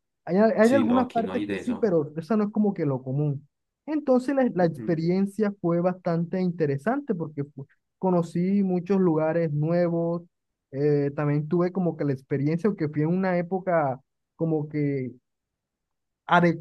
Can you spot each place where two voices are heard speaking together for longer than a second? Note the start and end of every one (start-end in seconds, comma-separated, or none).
0.6-2.0